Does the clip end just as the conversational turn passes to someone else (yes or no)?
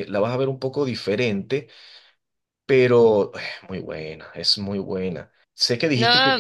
no